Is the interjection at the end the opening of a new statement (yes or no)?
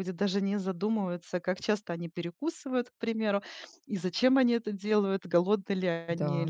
no